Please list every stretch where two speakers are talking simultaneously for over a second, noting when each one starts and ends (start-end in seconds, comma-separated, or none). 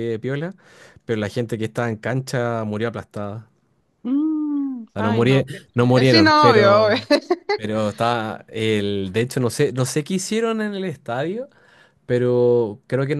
4.9-7.0